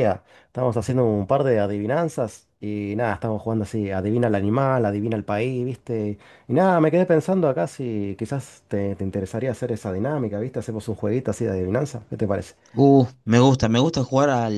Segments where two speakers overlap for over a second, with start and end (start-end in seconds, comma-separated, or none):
none